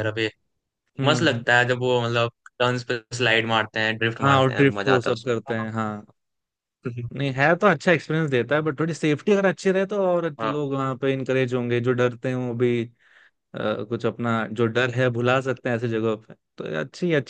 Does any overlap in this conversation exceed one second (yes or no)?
yes